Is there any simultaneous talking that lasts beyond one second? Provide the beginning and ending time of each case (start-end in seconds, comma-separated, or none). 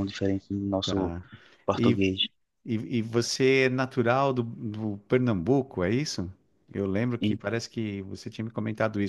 none